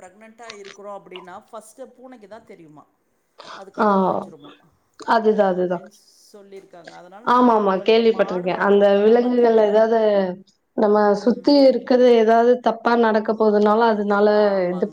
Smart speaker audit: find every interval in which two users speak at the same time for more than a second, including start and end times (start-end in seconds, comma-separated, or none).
7.3-9.7